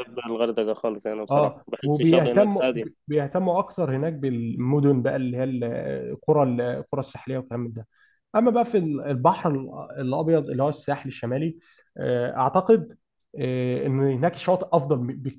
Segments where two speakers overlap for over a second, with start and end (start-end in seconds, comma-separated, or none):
1.3-2.9